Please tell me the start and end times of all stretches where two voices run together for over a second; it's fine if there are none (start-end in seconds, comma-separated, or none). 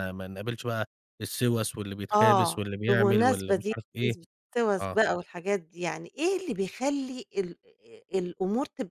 2.1-4.2